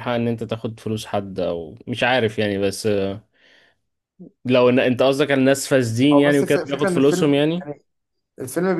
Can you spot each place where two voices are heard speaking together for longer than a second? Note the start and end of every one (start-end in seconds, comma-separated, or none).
6.1-7.7